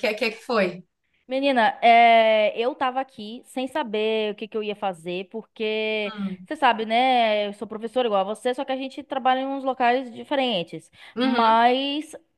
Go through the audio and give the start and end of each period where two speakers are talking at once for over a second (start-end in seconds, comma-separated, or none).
none